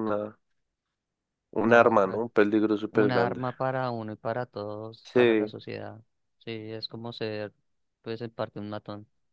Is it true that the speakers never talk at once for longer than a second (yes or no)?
yes